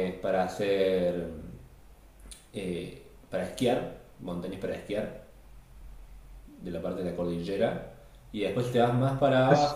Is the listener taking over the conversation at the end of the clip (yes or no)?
no